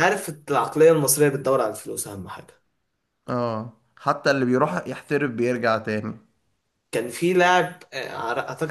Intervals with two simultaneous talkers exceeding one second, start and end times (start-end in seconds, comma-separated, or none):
none